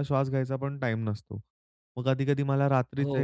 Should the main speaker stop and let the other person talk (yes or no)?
no